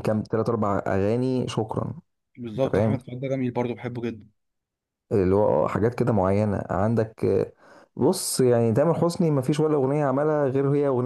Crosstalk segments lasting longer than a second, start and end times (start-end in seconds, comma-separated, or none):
none